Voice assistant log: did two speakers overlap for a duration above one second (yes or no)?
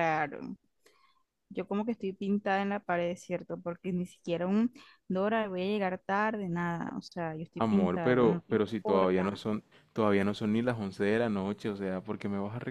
yes